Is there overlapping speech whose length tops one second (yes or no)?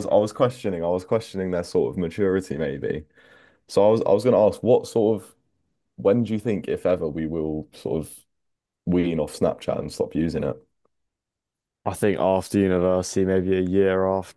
no